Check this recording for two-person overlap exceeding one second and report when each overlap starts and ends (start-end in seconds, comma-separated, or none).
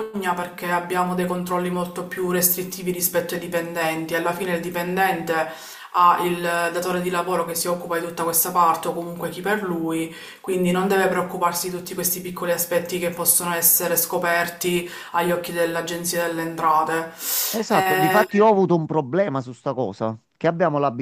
none